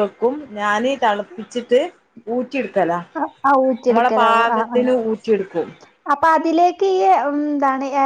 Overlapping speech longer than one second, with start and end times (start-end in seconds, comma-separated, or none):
none